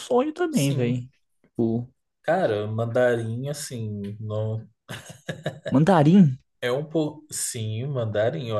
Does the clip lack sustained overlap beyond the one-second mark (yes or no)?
yes